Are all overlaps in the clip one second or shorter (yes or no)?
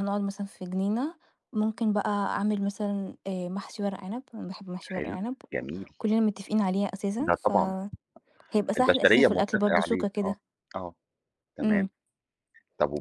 no